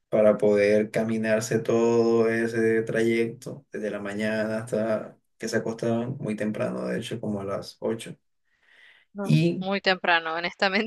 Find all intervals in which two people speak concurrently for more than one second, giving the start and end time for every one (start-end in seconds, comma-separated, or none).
none